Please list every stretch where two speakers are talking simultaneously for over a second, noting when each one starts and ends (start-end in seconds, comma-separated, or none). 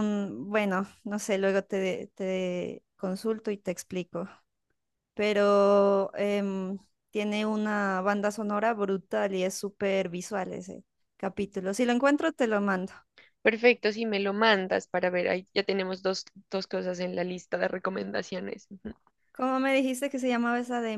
none